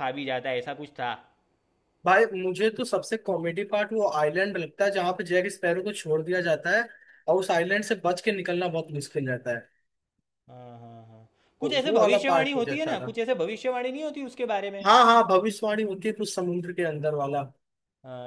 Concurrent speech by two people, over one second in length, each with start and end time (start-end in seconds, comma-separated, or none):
11.6-13.2